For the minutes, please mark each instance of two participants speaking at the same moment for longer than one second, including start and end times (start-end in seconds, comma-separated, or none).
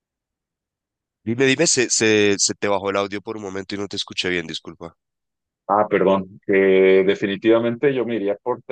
none